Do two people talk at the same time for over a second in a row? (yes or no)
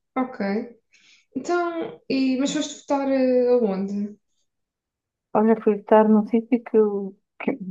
no